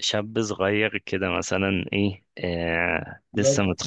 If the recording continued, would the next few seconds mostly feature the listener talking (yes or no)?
no